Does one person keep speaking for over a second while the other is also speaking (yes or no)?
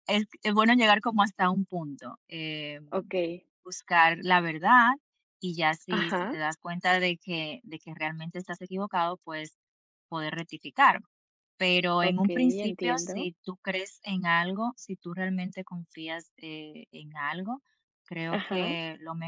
yes